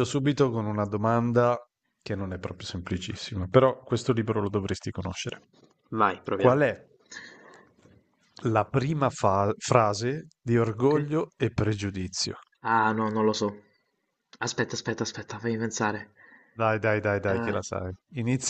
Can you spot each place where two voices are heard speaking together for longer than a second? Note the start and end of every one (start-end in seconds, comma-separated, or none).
none